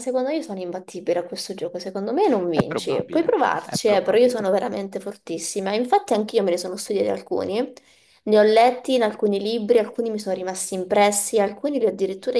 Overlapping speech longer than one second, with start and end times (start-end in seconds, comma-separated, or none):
2.5-4.5